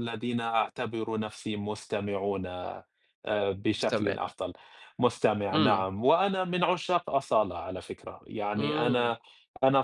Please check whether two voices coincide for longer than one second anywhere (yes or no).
no